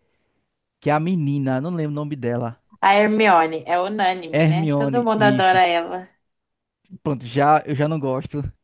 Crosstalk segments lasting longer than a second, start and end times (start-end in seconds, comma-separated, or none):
4.3-5.6